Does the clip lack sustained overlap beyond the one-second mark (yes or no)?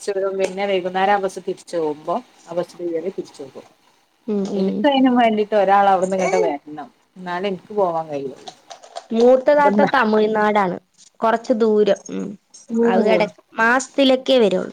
yes